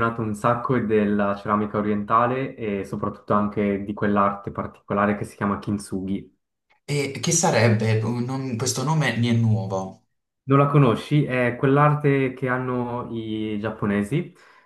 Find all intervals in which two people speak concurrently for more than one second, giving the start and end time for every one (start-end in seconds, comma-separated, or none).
none